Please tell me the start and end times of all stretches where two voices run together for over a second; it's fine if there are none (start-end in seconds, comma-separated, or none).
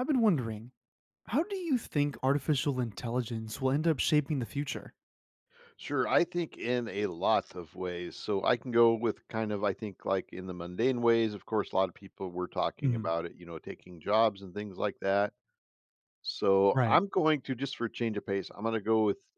none